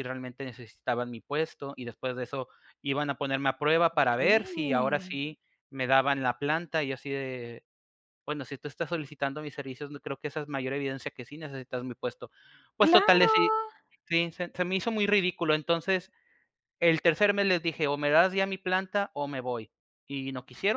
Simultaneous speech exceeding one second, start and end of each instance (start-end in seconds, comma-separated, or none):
3.9-5.2